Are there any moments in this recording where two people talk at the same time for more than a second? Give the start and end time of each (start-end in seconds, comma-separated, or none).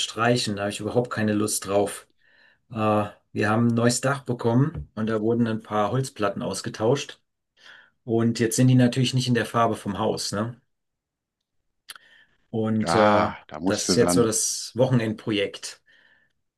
12.8-14.3